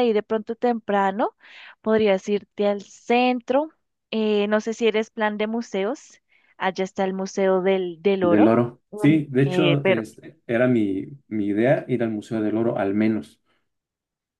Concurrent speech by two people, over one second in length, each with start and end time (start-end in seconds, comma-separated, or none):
8.2-10.0